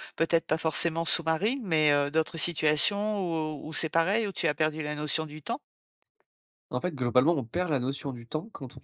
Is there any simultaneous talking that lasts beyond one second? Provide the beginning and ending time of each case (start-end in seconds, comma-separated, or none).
none